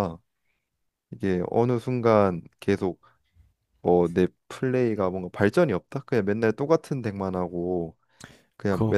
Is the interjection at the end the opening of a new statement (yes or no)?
no